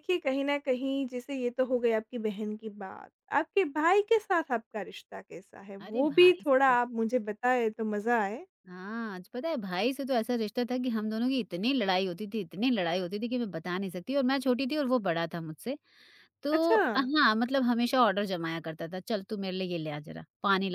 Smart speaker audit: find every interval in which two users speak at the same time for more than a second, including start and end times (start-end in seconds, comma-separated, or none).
none